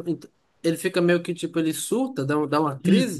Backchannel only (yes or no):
no